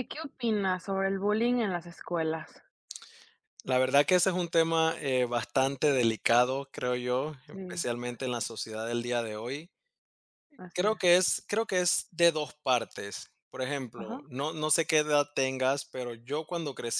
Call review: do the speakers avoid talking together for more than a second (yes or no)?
yes